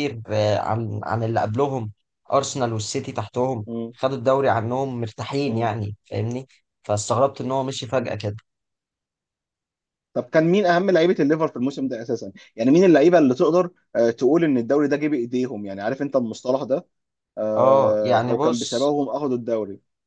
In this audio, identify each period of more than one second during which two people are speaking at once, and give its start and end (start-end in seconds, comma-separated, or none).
17.6-18.9